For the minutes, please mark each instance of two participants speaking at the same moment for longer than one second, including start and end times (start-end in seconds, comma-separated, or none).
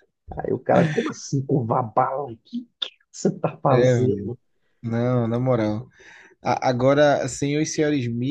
none